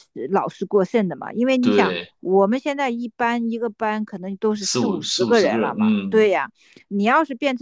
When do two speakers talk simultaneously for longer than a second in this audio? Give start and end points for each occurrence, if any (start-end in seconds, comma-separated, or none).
4.5-6.4